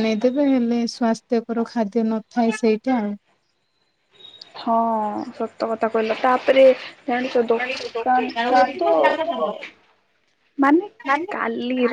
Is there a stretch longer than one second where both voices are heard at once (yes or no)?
no